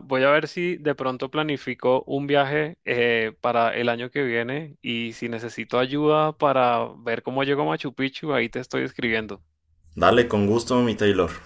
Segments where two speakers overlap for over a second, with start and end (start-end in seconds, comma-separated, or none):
none